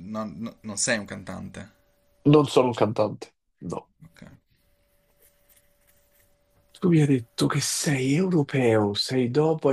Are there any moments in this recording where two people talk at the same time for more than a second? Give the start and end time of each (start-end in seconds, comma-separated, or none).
none